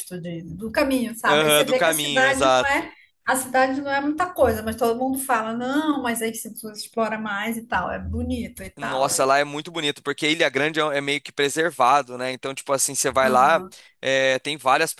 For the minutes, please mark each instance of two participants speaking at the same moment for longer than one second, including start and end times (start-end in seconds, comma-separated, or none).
1.2-2.9